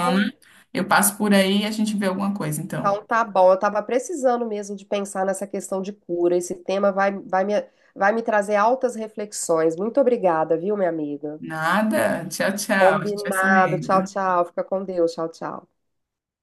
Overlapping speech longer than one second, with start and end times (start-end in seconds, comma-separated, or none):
12.8-14.2